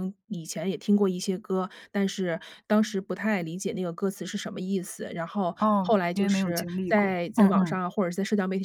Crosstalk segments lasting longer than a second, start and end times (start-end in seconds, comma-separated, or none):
5.6-7.8